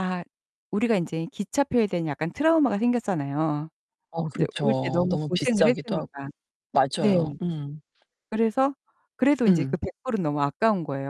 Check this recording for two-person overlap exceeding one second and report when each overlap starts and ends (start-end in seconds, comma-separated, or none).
4.3-6.1